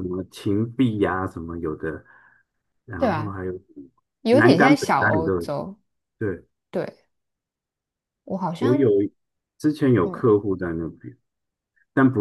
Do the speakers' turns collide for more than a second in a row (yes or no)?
yes